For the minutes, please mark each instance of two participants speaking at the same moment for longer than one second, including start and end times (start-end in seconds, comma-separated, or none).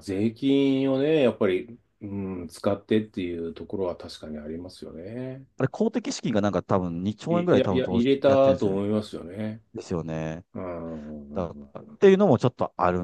7.3-8.8